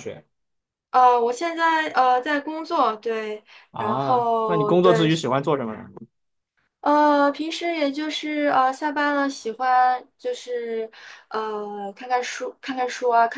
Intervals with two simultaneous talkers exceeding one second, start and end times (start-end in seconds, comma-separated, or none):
3.7-5.1